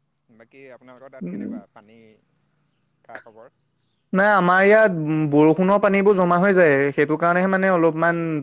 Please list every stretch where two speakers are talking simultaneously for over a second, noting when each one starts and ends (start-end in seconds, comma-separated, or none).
none